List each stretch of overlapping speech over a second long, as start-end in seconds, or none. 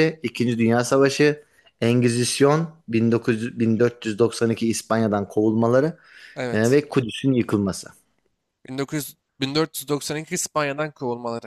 none